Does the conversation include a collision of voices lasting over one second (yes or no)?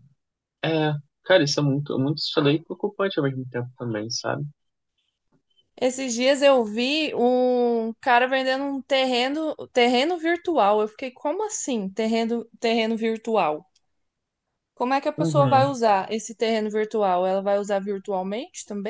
no